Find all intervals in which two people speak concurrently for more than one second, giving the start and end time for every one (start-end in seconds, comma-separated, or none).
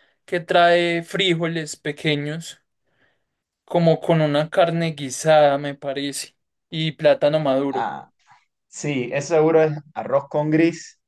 none